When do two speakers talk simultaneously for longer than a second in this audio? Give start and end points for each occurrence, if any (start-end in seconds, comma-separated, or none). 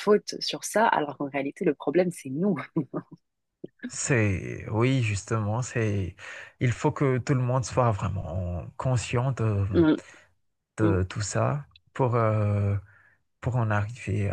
none